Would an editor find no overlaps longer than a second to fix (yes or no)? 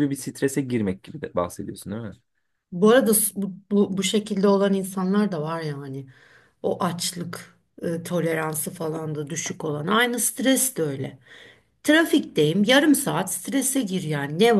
yes